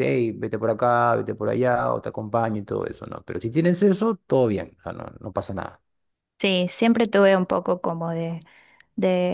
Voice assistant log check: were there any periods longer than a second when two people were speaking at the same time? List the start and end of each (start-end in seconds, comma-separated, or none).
none